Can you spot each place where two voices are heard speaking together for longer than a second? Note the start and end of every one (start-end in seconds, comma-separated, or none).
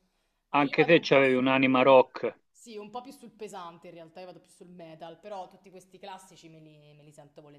0.6-1.9